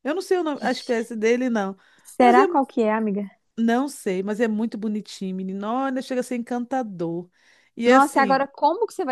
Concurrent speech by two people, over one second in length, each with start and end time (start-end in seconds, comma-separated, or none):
none